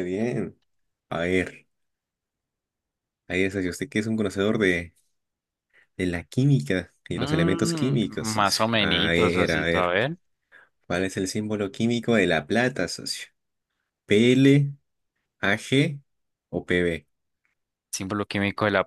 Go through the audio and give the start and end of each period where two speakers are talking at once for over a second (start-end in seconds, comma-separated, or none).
7.1-9.9